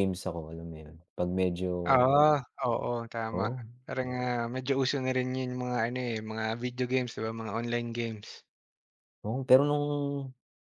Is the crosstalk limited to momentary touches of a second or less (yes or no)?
yes